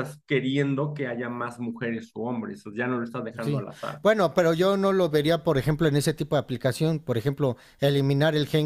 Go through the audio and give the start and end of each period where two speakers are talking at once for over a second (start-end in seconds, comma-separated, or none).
none